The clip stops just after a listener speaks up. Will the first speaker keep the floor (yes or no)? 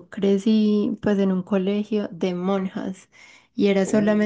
yes